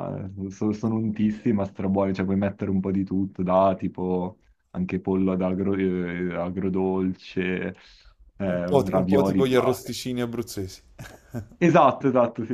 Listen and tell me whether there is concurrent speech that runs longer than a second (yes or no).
yes